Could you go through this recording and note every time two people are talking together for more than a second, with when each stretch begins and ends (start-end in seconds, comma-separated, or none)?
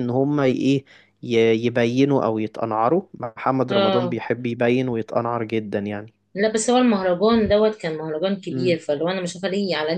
none